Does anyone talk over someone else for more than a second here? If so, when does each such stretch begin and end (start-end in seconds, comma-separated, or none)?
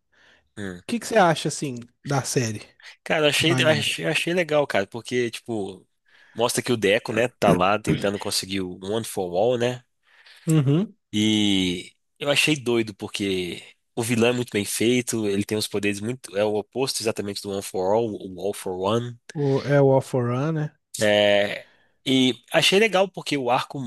none